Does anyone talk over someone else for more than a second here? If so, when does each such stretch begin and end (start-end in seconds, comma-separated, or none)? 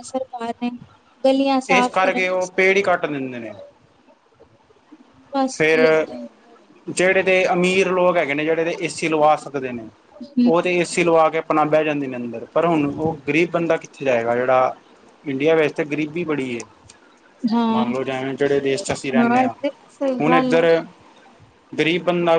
none